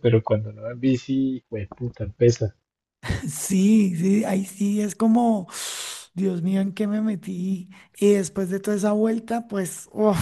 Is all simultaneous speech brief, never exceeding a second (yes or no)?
yes